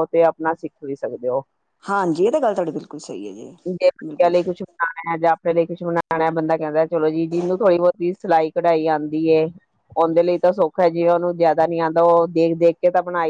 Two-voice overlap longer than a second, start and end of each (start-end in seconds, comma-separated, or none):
none